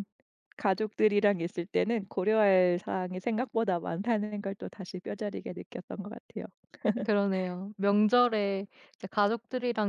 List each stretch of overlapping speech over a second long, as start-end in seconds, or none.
none